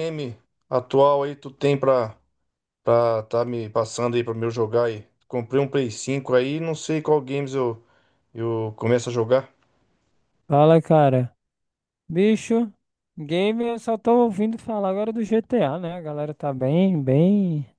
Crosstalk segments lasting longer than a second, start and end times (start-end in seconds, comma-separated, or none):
none